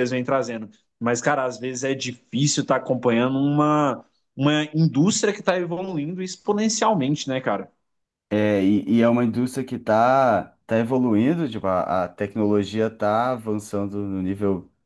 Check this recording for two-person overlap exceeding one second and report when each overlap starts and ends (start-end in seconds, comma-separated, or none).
none